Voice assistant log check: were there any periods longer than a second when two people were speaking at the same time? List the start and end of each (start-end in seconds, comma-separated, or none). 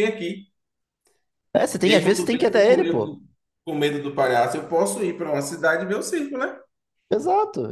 1.8-3.2